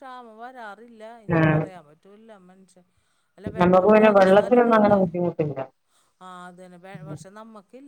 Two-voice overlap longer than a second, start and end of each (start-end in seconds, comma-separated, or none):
3.6-5.1